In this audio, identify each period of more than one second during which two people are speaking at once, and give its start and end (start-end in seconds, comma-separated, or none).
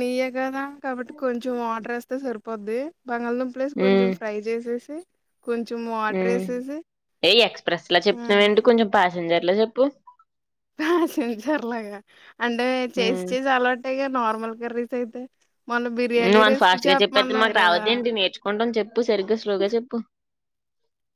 16.3-17.8